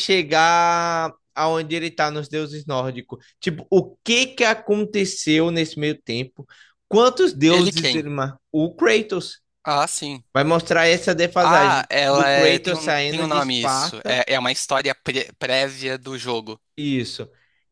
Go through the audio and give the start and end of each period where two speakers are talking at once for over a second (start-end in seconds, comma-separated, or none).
11.4-14.2